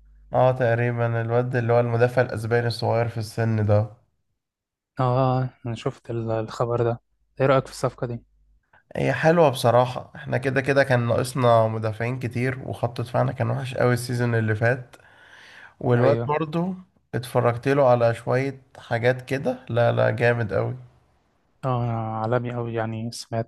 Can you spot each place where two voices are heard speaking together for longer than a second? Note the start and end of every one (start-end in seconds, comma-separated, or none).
none